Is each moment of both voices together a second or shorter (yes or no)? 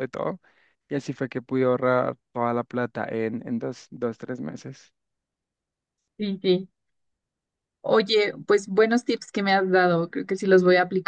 yes